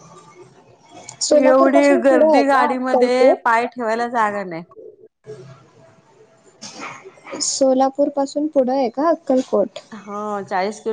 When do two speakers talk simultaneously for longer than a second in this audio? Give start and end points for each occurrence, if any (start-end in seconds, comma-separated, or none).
1.4-3.6